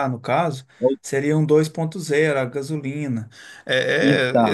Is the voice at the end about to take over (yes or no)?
no